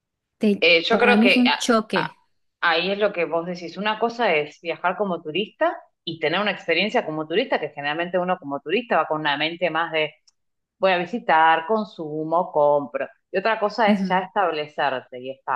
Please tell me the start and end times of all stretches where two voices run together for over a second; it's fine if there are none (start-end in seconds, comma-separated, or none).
0.6-2.1